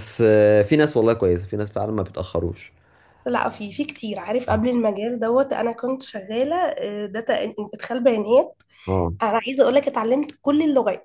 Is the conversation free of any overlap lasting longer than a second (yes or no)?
yes